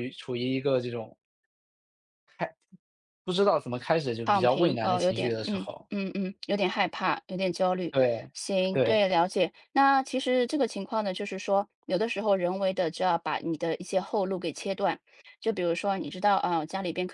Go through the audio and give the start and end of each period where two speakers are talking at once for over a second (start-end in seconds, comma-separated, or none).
4.2-5.9